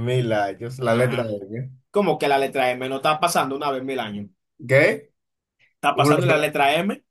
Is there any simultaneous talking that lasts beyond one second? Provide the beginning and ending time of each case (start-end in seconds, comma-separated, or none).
none